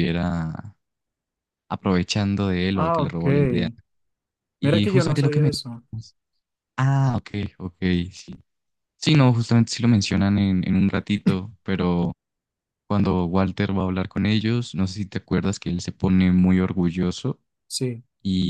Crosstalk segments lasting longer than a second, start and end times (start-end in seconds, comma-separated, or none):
4.6-5.8